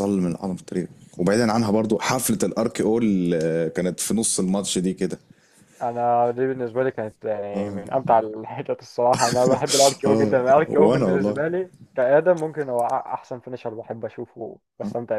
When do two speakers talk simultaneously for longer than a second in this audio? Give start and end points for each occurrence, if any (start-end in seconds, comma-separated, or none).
10.1-11.4